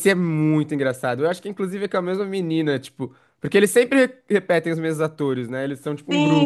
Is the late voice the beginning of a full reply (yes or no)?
yes